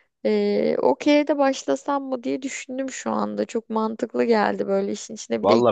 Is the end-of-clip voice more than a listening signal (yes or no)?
yes